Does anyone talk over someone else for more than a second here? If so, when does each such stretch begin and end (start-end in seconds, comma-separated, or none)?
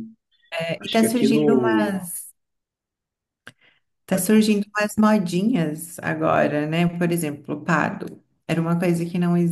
0.8-2.0